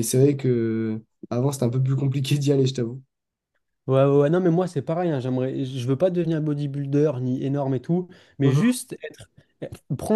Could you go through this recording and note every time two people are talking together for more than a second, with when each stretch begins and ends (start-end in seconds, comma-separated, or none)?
none